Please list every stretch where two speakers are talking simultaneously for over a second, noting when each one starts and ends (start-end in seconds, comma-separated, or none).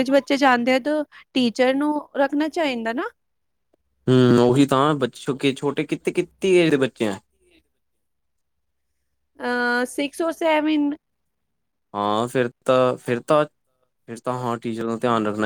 none